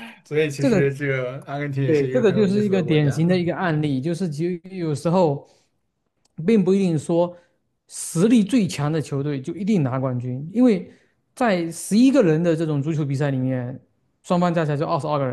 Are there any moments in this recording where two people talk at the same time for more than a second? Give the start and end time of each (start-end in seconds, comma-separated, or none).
1.8-3.2